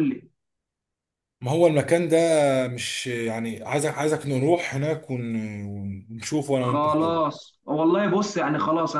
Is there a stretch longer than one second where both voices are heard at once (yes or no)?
no